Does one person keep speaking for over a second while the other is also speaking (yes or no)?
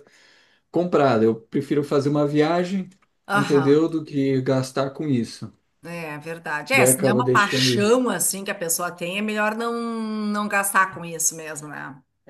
yes